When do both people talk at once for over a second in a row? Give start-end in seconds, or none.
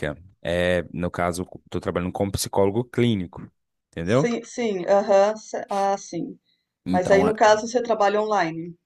none